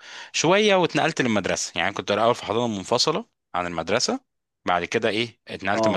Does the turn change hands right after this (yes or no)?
no